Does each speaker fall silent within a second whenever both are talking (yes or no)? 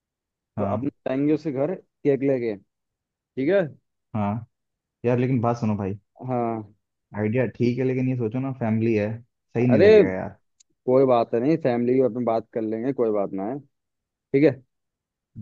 yes